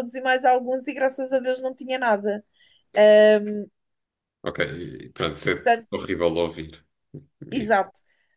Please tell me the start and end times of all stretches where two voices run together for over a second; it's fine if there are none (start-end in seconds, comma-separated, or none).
none